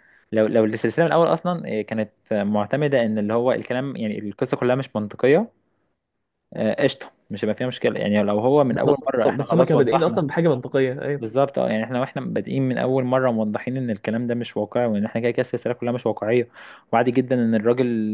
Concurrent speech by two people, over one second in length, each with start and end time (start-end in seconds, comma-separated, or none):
8.7-10.3